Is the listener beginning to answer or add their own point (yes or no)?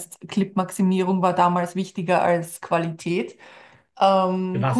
yes